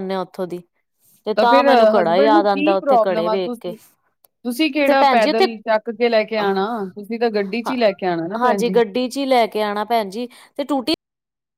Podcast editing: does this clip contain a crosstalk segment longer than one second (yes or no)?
yes